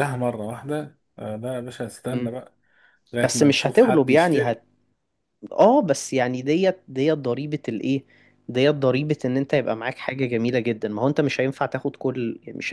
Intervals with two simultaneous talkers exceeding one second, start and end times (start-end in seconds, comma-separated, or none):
3.2-4.6